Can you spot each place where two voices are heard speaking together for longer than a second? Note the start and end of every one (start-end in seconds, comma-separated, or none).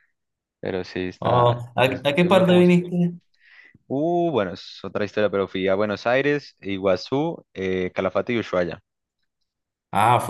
1.2-2.7